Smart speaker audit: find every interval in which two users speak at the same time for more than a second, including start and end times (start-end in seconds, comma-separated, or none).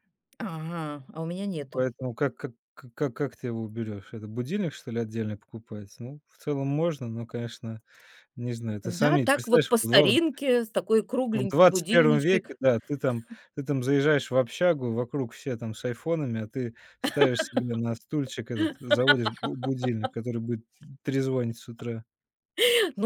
8.8-10.2, 11.3-12.6